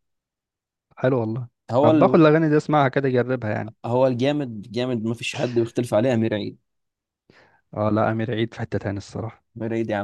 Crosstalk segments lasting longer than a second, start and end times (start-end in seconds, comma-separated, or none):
none